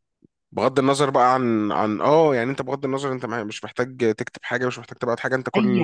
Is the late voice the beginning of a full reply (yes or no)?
yes